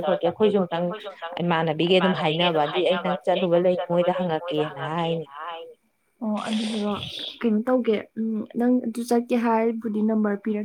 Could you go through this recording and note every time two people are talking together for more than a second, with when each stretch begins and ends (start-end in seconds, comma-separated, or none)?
2.9-5.2